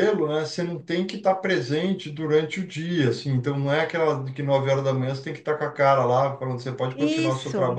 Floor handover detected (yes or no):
no